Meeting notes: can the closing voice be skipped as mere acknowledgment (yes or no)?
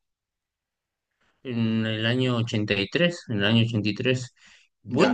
yes